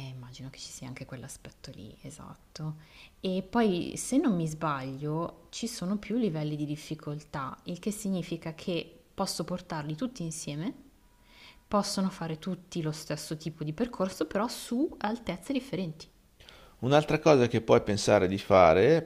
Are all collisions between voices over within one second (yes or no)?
yes